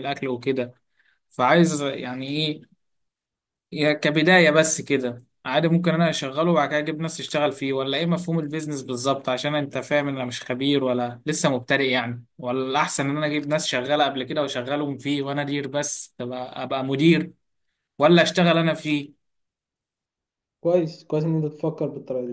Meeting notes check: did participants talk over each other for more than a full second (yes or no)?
no